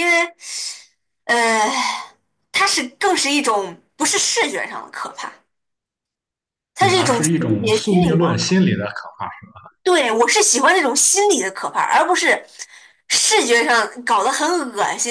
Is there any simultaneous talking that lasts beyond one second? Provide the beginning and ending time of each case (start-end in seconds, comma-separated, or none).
6.8-8.6